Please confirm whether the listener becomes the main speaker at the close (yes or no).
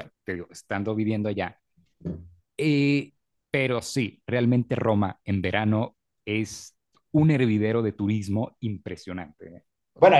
yes